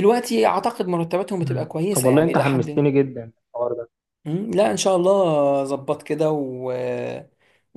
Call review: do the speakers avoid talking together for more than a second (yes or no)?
no